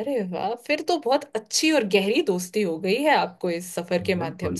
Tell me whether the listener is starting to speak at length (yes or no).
yes